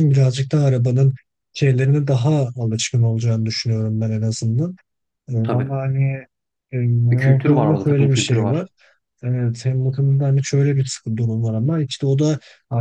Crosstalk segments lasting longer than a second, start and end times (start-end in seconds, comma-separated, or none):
7.1-8.7